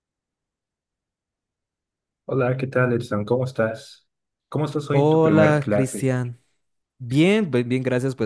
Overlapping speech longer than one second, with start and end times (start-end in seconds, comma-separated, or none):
4.9-6.1